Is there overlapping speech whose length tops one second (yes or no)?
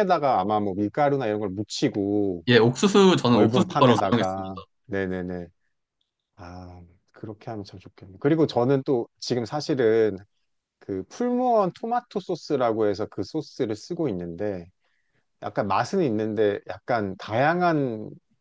yes